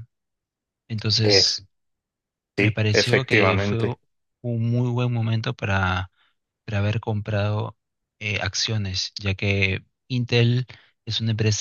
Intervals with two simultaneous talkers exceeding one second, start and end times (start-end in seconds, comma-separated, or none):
2.6-3.8